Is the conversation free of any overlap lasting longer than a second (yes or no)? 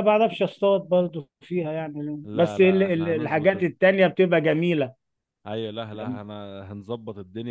no